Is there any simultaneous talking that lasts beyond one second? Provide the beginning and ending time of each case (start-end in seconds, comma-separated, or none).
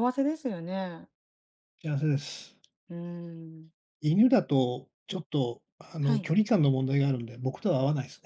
none